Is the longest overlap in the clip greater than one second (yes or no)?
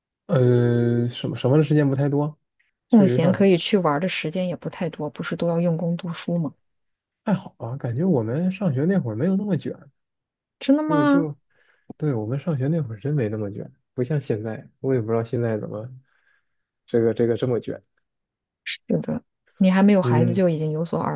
no